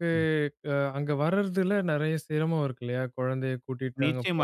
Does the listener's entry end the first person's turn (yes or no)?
yes